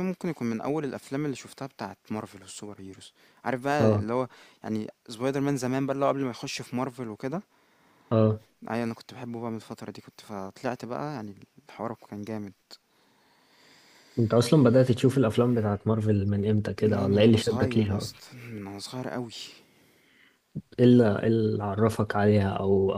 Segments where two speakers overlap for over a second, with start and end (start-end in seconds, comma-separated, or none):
16.9-18.2